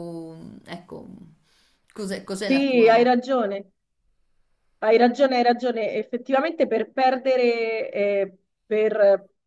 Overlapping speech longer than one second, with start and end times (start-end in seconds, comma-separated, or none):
none